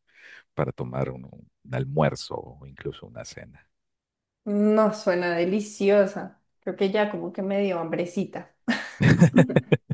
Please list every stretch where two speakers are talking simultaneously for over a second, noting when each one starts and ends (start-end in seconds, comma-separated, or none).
none